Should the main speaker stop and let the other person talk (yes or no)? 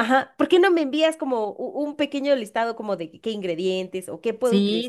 yes